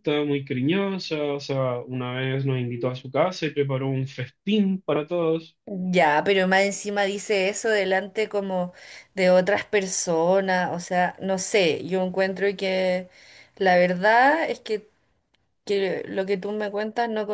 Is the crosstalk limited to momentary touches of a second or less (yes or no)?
yes